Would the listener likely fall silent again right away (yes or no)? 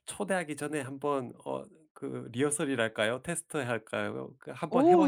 no